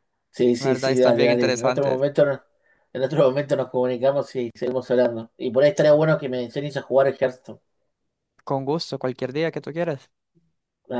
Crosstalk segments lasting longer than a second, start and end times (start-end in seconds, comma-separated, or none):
0.6-2.0